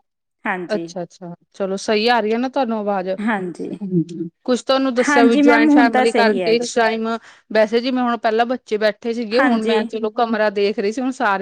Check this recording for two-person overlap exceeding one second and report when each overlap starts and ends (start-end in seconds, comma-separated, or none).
5.1-6.7